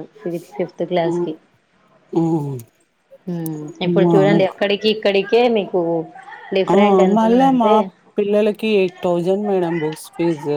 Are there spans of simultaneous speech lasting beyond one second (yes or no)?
no